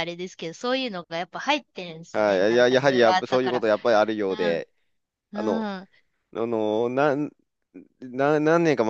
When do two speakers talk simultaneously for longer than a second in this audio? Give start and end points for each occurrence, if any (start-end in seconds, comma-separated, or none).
2.1-3.6